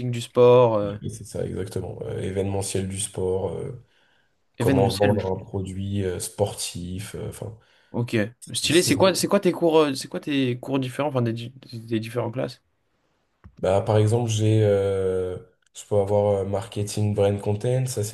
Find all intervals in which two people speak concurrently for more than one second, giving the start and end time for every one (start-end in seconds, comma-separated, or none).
none